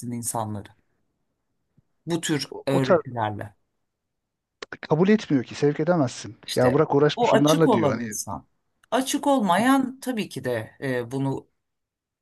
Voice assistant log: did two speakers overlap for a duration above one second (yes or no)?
yes